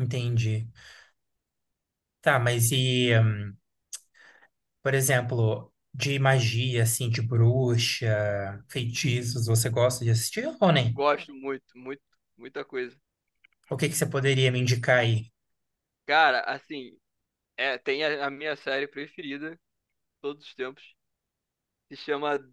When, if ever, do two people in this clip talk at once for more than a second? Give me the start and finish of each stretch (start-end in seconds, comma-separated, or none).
none